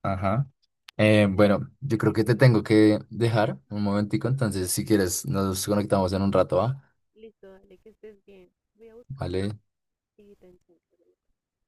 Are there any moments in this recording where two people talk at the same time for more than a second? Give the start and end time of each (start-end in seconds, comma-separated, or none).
1.0-2.6